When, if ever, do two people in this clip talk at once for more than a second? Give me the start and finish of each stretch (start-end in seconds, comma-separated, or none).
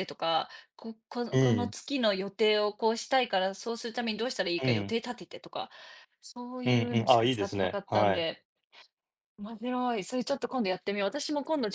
6.6-8.3